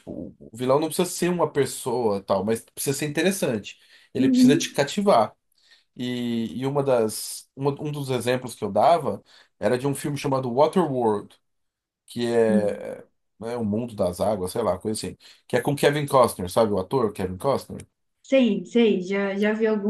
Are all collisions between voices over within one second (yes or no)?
yes